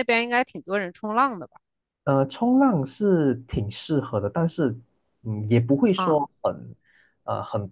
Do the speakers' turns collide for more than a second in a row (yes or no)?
no